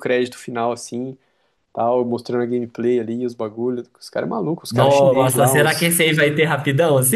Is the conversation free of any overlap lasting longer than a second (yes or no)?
no